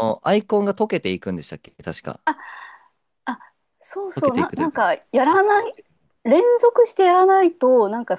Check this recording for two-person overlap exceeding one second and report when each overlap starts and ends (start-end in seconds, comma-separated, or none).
4.2-5.8